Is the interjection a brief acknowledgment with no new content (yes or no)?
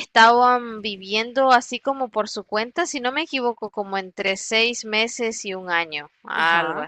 no